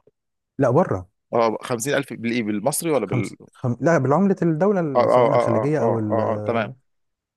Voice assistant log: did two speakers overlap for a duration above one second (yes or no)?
yes